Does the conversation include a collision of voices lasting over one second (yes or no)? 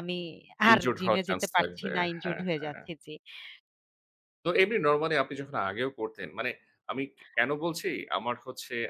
yes